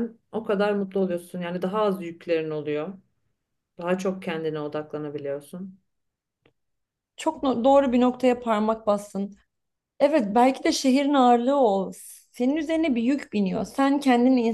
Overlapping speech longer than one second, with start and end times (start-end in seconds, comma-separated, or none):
none